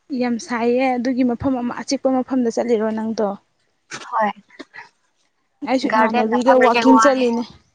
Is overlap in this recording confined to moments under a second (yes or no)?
no